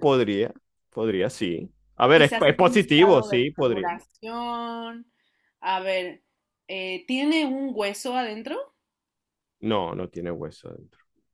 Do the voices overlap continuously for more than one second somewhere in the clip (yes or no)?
yes